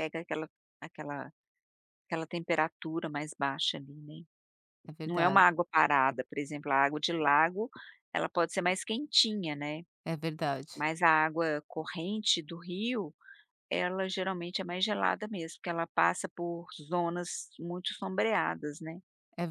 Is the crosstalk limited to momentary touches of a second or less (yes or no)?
yes